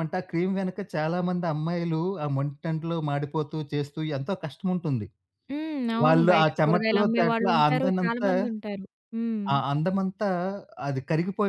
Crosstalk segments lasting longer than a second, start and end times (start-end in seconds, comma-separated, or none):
6.0-8.3